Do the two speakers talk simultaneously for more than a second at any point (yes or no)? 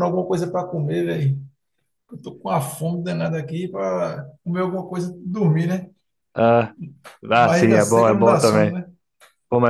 yes